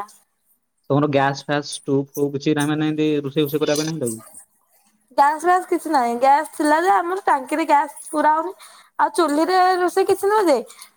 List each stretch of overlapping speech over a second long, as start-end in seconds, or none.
none